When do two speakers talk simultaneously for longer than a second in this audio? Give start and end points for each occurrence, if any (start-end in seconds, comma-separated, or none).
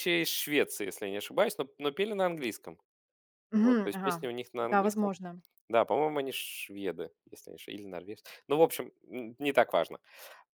3.5-5.1